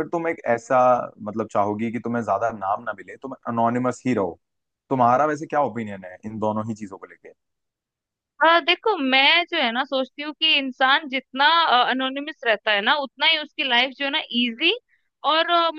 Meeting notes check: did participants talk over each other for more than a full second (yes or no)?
no